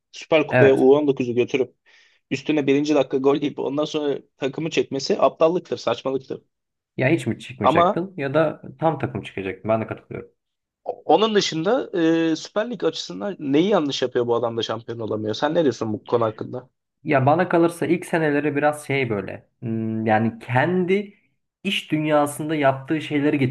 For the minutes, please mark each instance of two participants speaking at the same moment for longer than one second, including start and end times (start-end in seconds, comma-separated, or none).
none